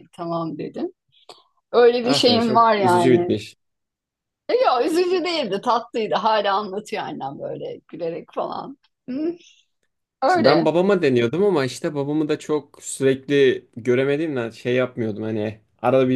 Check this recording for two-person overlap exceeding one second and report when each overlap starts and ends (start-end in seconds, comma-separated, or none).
2.0-3.4